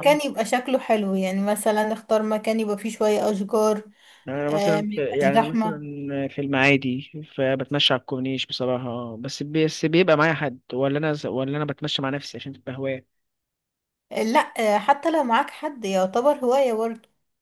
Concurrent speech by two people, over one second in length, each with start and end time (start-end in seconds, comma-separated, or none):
4.5-5.8